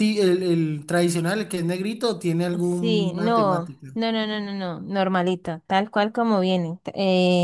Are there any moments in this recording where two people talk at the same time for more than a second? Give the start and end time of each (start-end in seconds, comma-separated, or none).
2.6-3.9